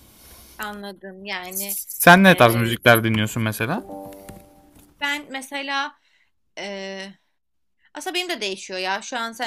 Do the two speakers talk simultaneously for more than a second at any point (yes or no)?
no